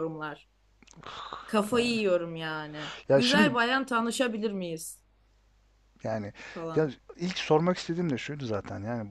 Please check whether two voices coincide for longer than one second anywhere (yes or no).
no